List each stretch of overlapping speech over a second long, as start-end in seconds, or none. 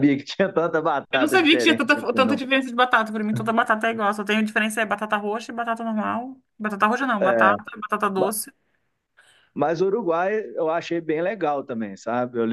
1.1-2.4